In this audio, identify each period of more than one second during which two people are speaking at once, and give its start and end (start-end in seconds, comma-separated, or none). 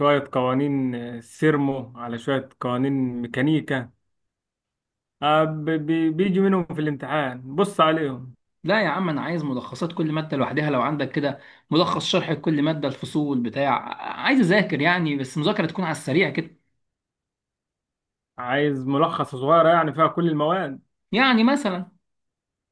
none